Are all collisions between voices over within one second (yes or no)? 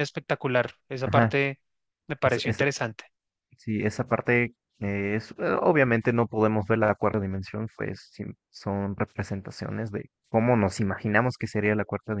yes